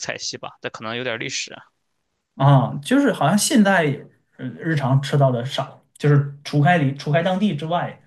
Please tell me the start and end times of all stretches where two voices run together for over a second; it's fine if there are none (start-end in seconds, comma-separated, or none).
none